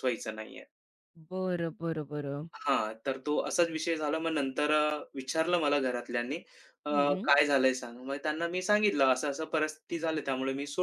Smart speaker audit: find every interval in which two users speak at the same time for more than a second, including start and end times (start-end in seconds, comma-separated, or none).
none